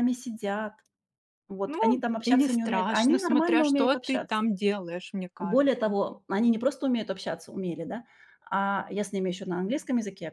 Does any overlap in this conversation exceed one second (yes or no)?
yes